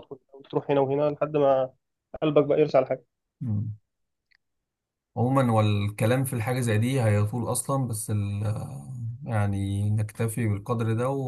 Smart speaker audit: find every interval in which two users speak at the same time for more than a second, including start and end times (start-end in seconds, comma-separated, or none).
none